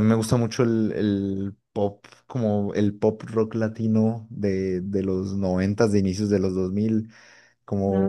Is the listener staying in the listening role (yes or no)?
yes